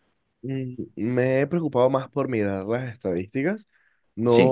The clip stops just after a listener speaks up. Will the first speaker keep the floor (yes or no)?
yes